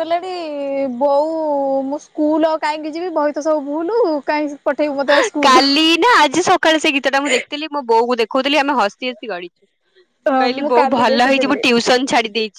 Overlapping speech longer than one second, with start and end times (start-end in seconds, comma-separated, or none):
10.1-11.6